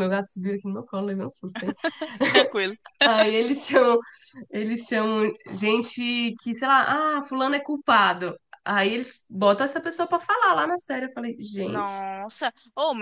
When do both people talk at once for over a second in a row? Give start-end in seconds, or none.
none